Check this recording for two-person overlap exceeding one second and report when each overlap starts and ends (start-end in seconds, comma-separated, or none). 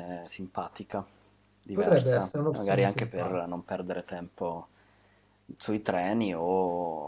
1.7-3.5